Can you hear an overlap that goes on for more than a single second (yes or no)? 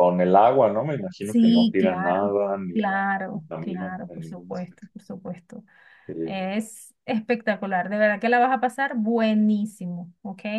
yes